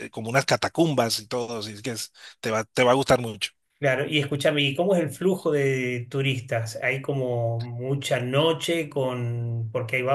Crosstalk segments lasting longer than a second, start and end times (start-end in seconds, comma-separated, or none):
none